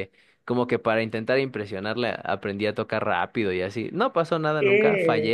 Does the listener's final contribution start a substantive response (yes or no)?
yes